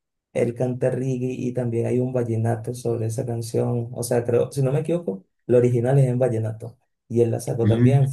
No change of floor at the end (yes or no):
yes